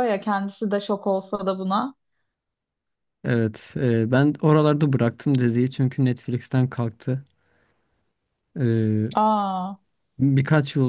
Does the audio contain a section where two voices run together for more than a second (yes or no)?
no